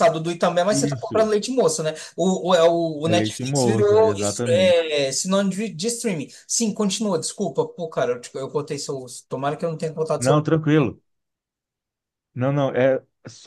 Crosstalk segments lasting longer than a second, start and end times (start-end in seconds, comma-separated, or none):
3.0-4.8